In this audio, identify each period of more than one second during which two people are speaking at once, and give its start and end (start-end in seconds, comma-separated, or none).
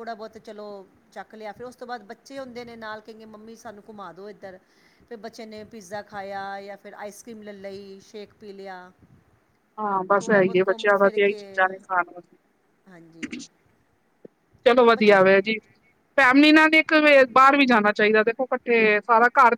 10.2-11.7